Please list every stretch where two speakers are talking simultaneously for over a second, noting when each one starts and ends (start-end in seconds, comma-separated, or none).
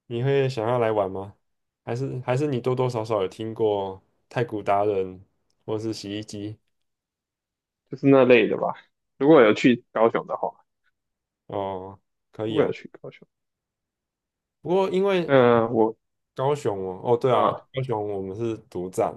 none